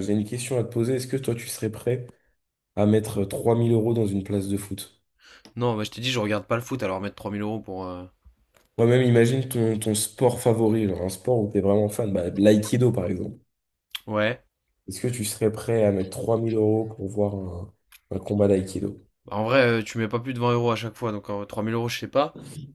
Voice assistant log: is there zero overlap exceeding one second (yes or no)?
yes